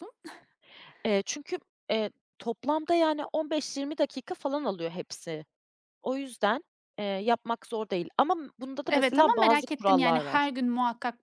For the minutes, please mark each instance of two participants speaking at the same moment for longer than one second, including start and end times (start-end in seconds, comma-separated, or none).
8.9-10.5